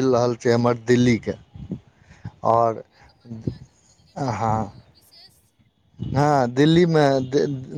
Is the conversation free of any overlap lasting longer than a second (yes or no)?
yes